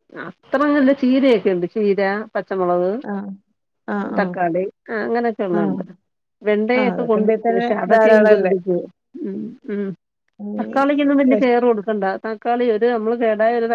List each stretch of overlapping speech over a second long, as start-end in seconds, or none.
6.8-8.5